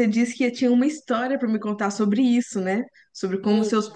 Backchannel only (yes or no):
yes